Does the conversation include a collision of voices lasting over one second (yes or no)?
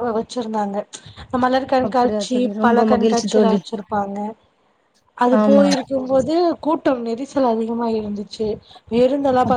yes